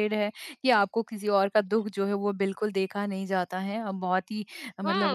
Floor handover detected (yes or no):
yes